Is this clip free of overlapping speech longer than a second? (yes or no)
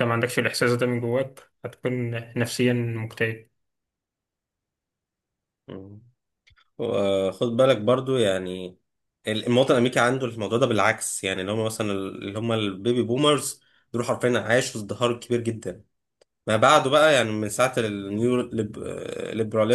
yes